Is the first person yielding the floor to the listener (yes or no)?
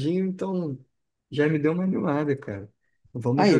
no